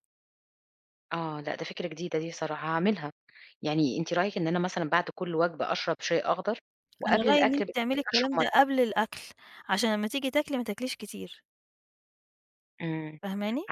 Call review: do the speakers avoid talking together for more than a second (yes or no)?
no